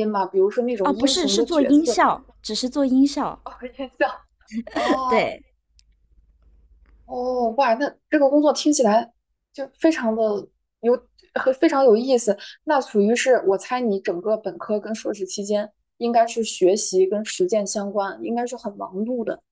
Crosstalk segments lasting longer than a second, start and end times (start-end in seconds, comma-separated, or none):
0.8-2.0